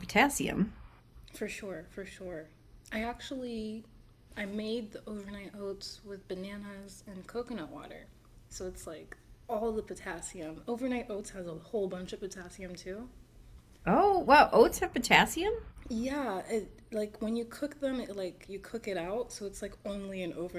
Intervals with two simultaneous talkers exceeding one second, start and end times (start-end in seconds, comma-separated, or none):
none